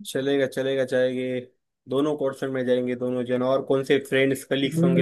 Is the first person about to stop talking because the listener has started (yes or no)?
yes